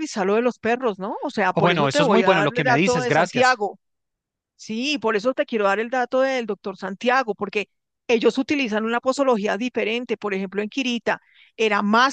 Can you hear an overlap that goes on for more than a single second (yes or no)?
yes